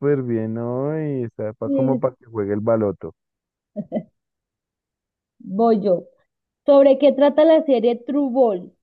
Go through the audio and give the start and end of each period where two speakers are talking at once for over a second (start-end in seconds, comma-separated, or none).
none